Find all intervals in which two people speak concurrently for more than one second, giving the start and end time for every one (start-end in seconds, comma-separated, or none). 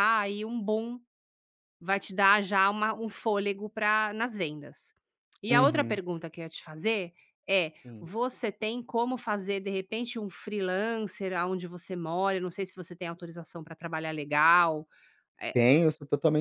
none